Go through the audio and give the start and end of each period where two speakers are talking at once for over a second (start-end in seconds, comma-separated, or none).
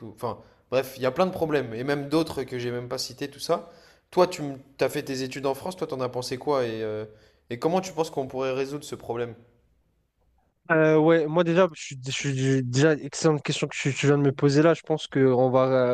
none